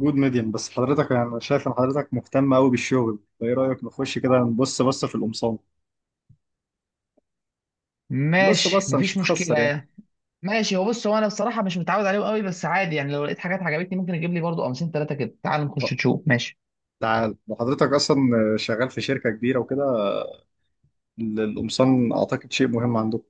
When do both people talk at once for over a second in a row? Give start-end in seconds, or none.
8.4-9.8